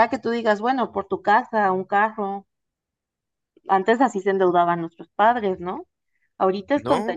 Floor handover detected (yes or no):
no